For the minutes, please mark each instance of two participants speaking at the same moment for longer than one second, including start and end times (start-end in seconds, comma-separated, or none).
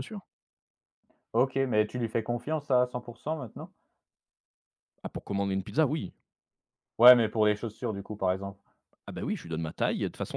none